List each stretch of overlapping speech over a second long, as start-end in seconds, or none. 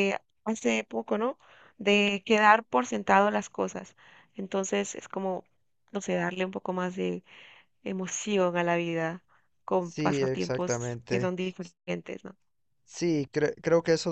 9.8-11.3